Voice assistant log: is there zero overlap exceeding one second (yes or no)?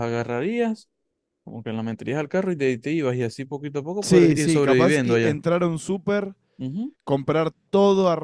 no